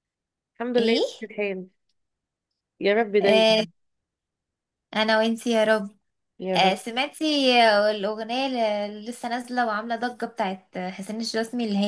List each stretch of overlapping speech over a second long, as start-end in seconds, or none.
none